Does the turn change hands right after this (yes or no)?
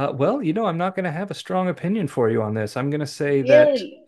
no